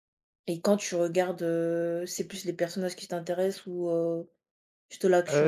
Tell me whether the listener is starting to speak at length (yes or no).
yes